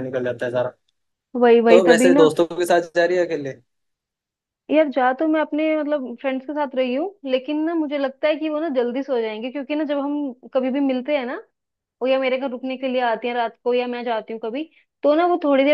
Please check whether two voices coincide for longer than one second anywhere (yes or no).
no